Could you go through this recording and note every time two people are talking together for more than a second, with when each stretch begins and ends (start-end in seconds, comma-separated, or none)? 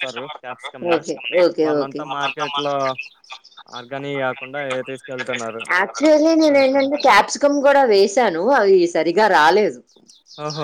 none